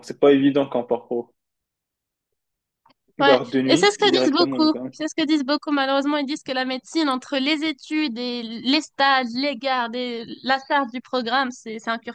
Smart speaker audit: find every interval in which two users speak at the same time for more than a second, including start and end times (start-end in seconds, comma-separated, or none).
3.2-4.9